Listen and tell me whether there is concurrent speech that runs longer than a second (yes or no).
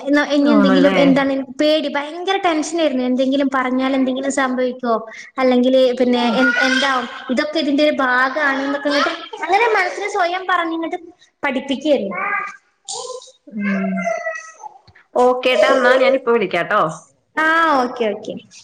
no